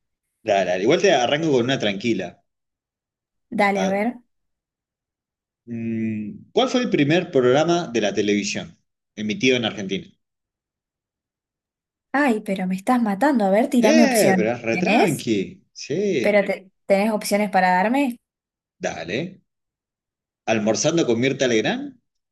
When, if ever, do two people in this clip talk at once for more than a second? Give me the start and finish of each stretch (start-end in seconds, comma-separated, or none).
13.9-15.3